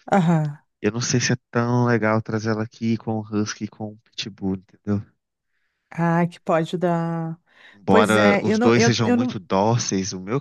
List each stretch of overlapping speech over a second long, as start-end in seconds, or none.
7.9-9.4